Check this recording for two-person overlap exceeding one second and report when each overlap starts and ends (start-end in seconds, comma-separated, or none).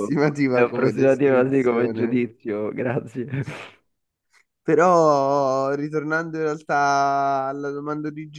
0.5-2.3